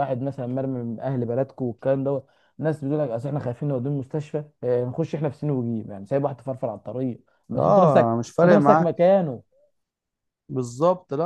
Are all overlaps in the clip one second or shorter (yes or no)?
no